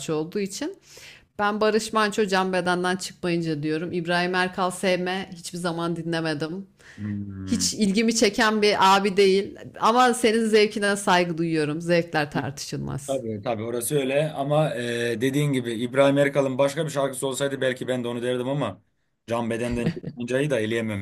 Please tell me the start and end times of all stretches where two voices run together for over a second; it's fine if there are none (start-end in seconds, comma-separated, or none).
none